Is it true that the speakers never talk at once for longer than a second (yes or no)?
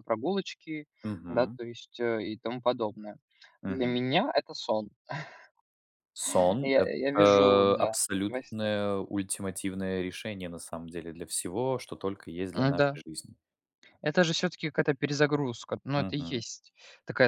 no